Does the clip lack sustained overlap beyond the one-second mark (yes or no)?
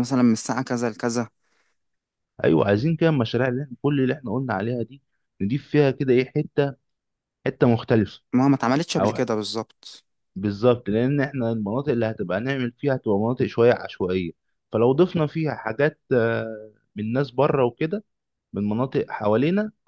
yes